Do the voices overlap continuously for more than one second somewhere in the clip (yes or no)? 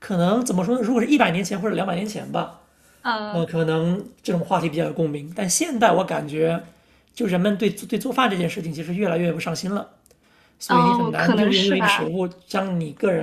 yes